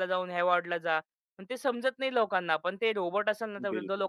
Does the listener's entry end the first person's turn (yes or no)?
no